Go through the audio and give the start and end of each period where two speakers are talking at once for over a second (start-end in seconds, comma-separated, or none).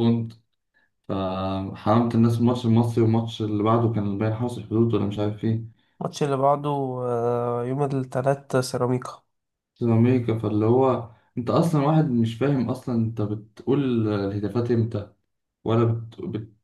none